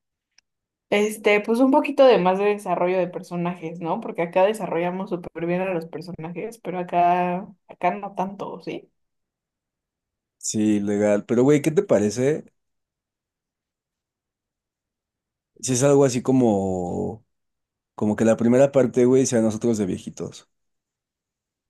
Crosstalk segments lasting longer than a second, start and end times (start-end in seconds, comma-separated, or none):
none